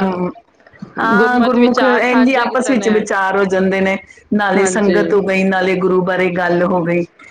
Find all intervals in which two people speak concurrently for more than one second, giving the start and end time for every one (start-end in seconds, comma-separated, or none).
1.0-2.9